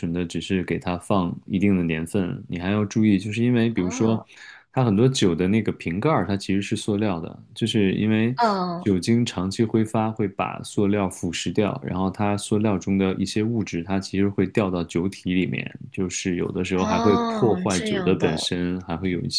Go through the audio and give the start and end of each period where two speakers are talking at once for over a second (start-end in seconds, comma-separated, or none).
16.8-18.4